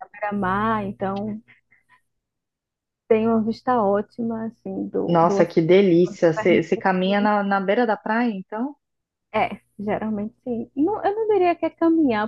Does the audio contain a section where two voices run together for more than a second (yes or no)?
yes